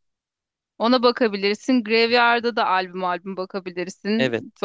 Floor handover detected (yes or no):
no